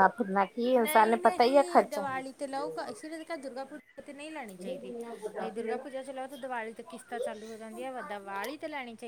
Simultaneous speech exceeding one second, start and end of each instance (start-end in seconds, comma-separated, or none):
0.8-2.1